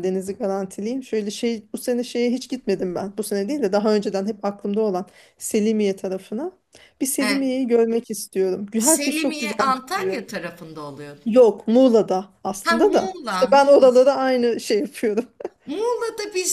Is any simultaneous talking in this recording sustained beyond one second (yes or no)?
yes